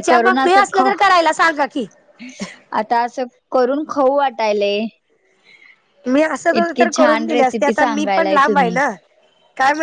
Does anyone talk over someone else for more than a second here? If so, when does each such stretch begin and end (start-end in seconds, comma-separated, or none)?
6.6-8.7